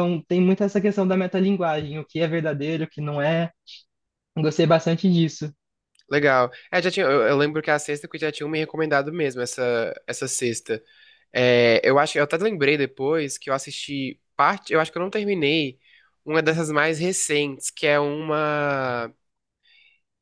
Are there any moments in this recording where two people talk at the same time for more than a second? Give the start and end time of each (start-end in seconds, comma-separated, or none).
none